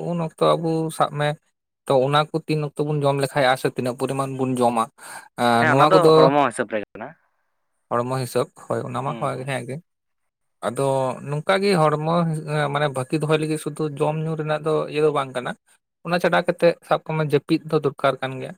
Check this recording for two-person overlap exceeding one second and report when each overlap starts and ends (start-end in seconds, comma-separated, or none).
none